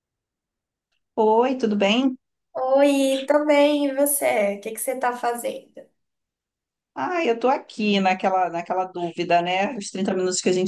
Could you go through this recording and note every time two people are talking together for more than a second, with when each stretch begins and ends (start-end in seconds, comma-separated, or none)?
none